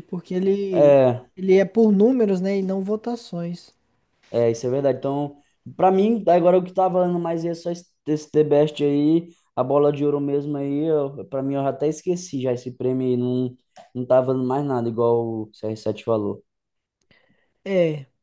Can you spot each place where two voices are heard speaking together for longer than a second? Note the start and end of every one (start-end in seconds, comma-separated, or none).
none